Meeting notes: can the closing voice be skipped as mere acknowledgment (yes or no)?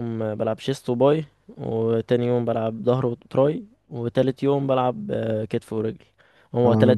yes